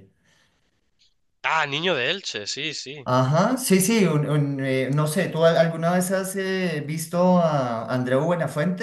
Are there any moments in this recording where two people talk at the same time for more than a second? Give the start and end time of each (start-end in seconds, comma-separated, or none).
none